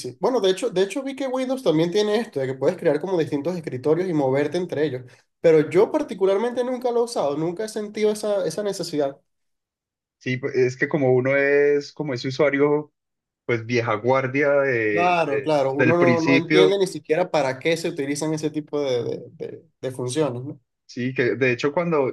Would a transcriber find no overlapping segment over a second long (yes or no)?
no